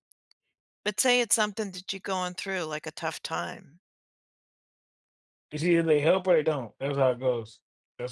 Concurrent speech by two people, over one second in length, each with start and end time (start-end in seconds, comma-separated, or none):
none